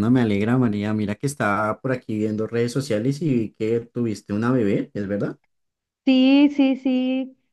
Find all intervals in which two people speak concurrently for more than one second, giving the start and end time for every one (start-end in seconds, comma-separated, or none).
none